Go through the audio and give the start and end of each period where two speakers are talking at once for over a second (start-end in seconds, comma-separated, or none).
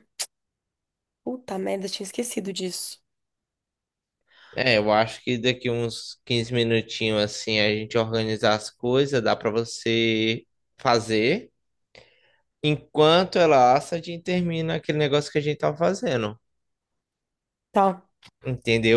none